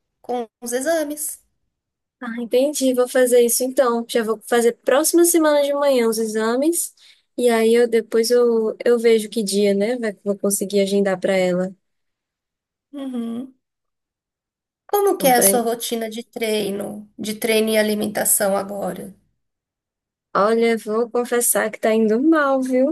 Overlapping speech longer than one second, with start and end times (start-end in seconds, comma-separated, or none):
none